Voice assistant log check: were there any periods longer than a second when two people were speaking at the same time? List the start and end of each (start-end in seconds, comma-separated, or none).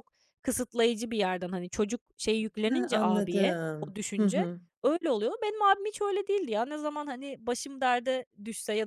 2.7-4.5